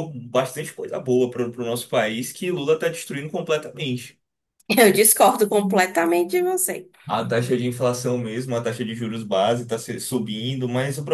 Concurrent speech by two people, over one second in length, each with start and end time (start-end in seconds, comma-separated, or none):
none